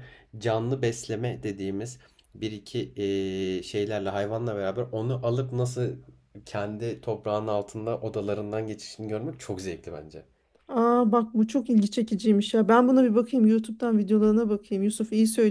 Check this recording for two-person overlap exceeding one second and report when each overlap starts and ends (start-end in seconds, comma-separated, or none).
none